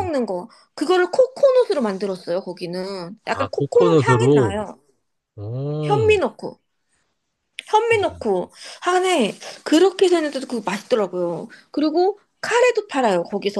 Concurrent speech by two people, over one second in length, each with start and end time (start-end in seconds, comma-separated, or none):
3.2-4.5